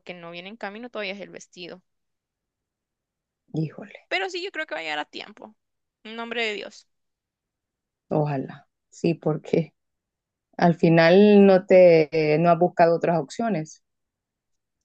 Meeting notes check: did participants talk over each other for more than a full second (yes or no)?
no